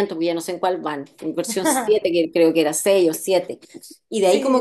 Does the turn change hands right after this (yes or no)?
no